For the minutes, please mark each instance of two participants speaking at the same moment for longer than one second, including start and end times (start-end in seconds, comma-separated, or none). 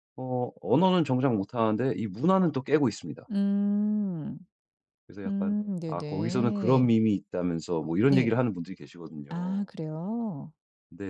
5.3-6.9